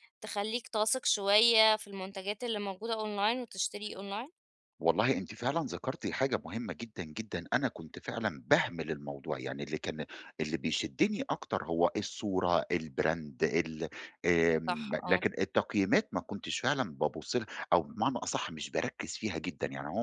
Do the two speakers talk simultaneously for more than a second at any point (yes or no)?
no